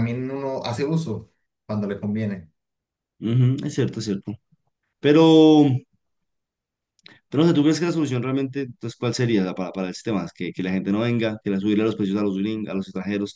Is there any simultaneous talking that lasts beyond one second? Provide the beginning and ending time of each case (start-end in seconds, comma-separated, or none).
none